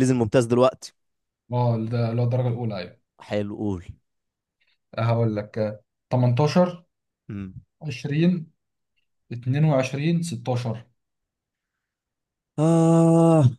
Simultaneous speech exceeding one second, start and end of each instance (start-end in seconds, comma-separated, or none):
none